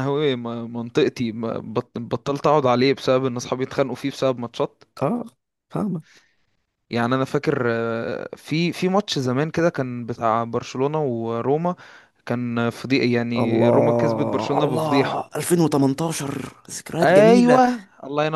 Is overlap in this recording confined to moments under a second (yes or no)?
no